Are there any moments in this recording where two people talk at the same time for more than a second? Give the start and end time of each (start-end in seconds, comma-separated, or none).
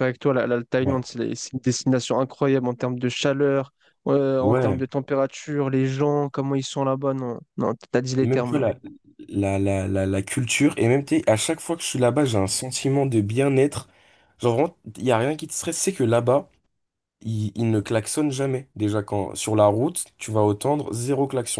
none